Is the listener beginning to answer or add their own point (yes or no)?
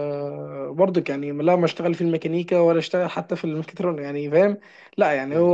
no